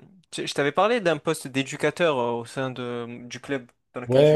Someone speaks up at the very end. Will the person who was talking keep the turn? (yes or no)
no